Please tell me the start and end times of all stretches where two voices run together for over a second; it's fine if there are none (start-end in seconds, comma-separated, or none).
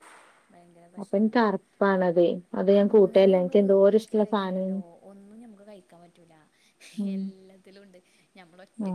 2.8-4.8